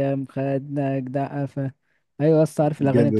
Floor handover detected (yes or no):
no